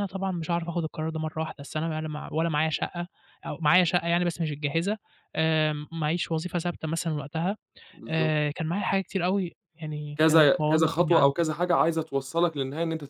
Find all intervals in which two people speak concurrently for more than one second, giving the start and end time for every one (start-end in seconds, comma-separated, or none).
10.2-11.4